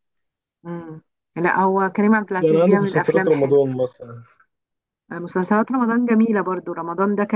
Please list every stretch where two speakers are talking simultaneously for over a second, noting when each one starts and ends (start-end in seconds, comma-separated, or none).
2.4-3.6